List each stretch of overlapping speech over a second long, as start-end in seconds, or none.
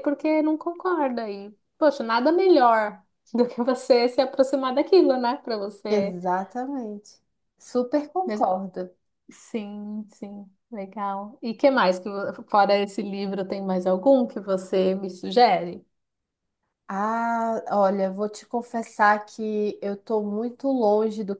none